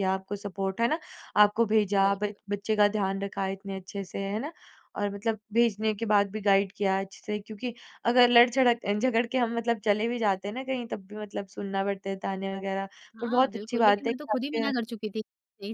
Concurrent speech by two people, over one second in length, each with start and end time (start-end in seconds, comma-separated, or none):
13.2-14.7